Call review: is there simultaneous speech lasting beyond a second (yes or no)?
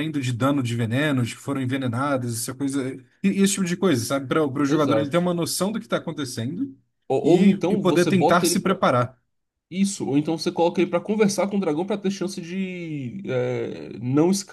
yes